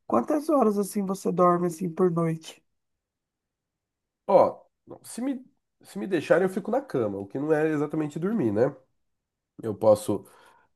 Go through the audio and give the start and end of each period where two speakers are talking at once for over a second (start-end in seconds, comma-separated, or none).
none